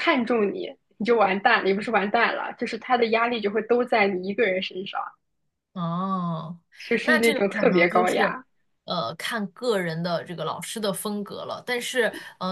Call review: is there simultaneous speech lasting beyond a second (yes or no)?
yes